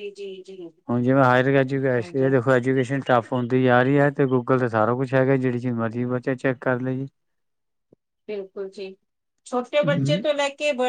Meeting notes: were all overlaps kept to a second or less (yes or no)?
yes